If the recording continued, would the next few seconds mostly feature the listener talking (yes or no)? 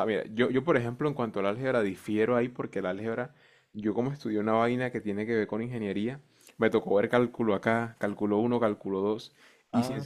no